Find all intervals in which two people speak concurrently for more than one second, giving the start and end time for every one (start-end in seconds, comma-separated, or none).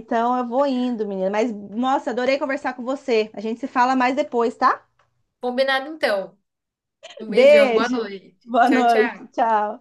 7.3-9.3